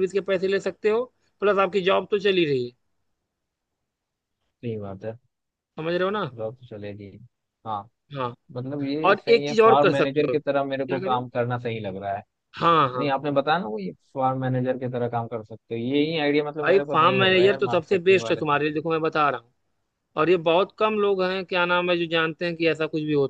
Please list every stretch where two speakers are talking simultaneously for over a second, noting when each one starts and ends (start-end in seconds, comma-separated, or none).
9.0-11.2, 16.6-18.6